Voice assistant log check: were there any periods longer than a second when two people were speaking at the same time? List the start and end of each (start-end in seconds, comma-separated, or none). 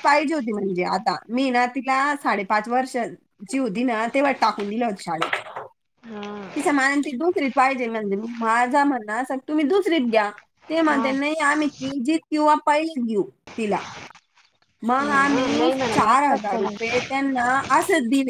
15.0-16.9